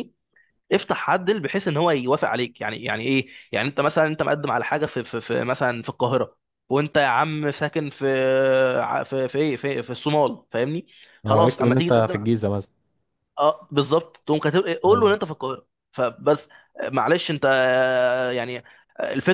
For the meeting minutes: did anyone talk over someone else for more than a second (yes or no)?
yes